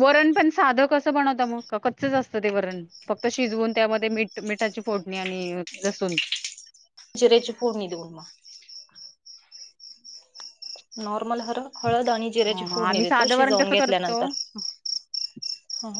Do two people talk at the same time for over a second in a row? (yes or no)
yes